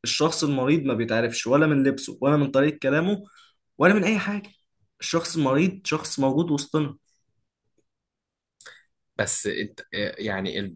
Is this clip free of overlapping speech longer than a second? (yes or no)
yes